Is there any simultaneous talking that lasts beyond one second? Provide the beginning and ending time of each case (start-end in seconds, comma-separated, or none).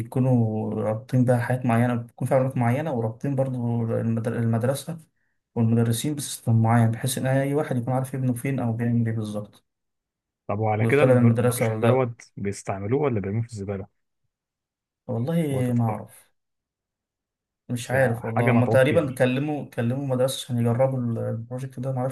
10.8-12.1, 17.8-19.1